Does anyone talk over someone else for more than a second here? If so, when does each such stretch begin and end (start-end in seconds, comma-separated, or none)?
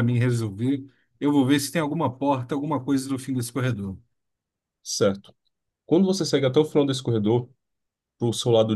none